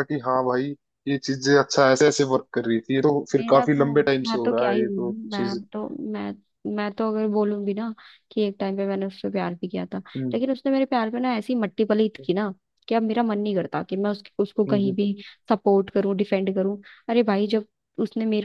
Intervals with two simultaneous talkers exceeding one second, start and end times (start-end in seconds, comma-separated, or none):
3.4-5.6